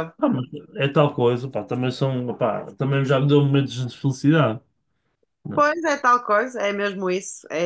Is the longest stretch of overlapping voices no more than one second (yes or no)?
yes